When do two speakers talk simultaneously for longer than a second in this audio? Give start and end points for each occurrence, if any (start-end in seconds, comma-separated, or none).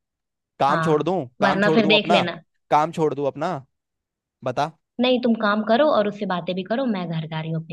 0.7-2.2